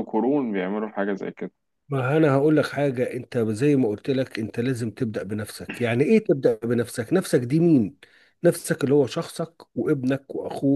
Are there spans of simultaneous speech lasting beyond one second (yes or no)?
no